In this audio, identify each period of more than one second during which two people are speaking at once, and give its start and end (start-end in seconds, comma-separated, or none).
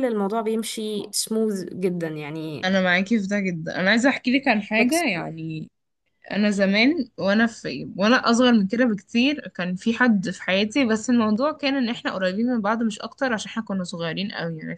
none